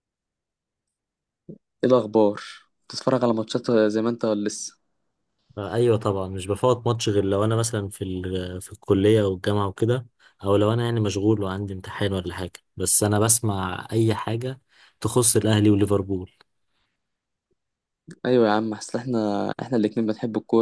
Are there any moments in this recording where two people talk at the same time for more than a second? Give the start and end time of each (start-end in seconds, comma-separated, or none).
none